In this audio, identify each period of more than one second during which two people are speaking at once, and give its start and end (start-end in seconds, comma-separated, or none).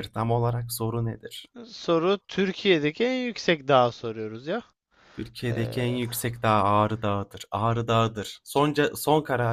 none